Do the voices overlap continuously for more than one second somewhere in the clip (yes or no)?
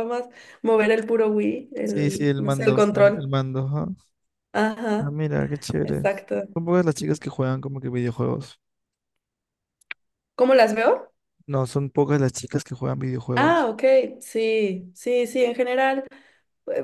yes